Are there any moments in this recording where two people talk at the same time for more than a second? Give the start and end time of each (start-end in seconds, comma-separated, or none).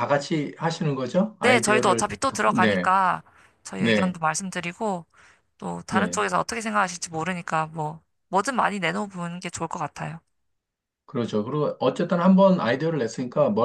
1.4-2.9